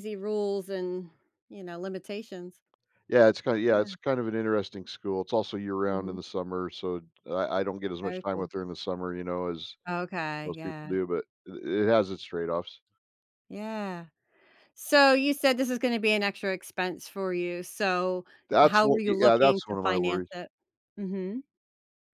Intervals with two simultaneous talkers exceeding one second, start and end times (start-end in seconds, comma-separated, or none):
18.6-20.3